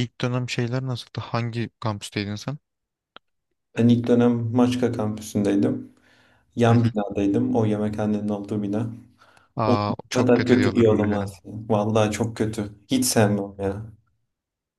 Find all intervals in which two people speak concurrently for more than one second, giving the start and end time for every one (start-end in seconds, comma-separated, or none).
9.7-11.3